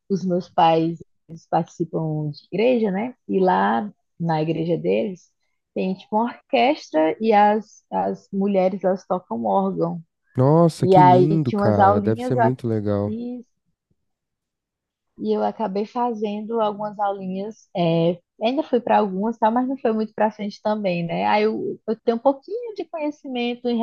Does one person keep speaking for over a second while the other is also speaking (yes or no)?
yes